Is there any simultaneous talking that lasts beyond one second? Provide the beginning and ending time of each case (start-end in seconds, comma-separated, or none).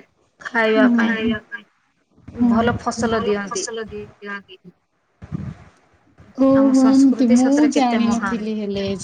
6.6-8.5